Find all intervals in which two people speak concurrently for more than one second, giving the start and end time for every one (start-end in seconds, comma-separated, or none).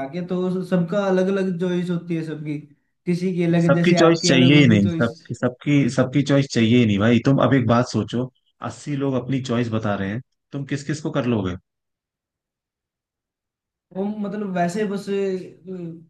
3.6-5.1